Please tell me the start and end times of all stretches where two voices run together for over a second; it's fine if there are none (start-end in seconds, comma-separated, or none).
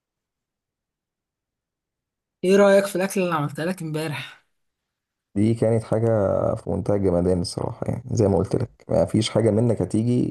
none